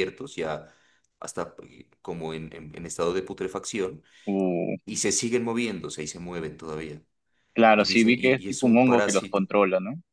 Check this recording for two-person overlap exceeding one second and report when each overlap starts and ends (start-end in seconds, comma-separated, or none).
7.7-9.4